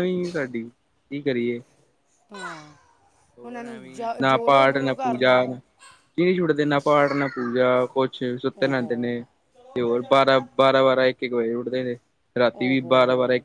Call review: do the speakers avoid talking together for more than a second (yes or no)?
no